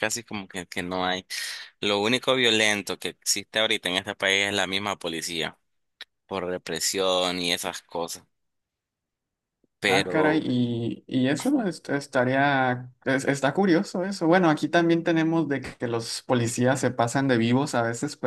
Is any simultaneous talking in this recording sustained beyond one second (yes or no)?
no